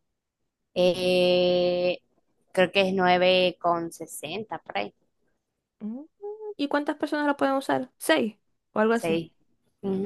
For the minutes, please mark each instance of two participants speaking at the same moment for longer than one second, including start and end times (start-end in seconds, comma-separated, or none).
none